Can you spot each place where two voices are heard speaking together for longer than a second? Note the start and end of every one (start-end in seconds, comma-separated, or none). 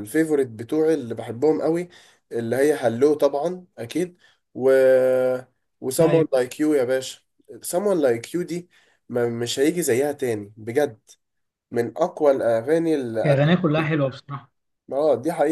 none